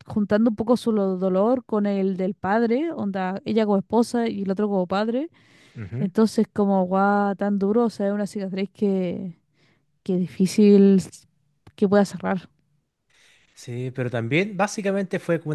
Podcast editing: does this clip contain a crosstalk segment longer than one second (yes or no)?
no